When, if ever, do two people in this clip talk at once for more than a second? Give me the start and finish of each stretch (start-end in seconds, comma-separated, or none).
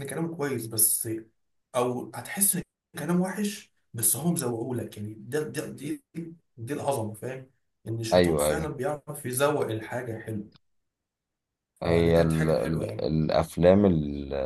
11.8-13.1